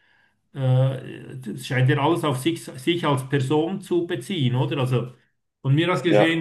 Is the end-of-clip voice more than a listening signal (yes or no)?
no